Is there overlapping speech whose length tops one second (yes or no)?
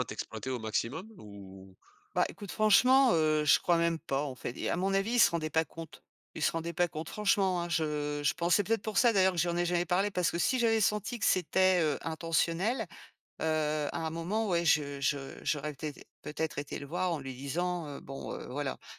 no